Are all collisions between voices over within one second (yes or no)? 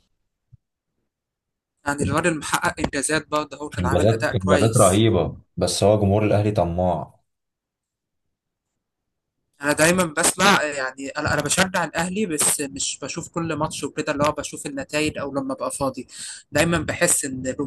no